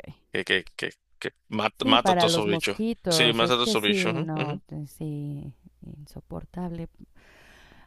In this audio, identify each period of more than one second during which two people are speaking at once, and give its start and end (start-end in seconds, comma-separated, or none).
1.8-4.6